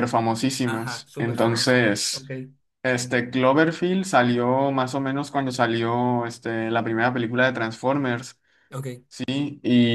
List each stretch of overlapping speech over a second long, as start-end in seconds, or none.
0.6-2.2